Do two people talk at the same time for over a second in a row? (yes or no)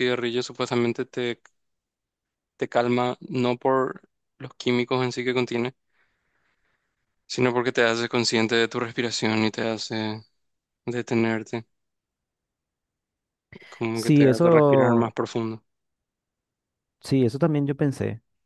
yes